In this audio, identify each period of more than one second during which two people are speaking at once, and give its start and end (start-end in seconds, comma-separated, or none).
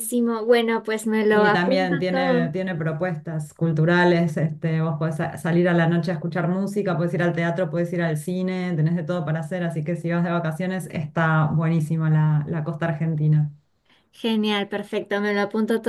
1.3-2.5